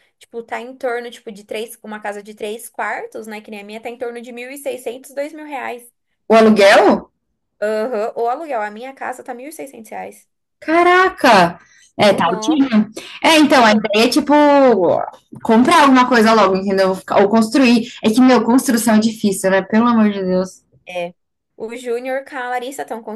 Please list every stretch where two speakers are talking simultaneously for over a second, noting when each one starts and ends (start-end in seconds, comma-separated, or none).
none